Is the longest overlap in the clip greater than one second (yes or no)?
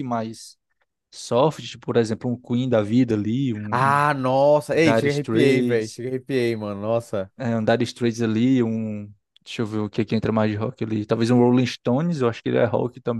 yes